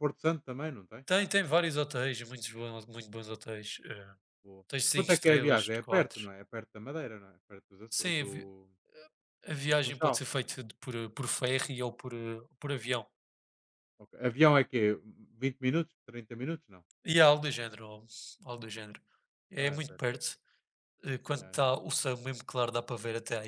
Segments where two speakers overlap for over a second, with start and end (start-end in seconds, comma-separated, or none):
4.7-6.3